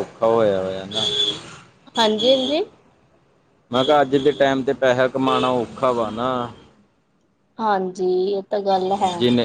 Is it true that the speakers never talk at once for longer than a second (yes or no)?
yes